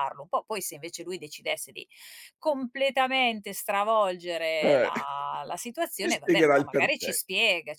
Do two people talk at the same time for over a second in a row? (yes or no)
yes